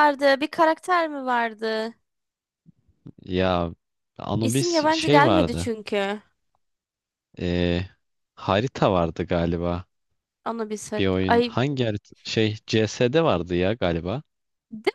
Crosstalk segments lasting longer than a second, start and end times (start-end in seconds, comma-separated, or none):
4.4-5.7